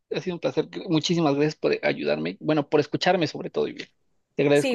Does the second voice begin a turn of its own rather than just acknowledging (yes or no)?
yes